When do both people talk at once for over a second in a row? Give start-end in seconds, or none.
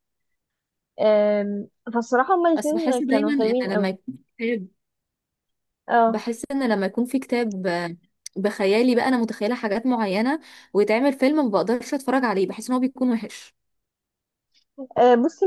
2.5-4.0